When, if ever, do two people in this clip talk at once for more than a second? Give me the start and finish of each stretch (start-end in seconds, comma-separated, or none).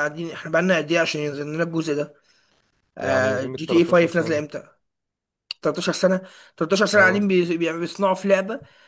3.0-4.4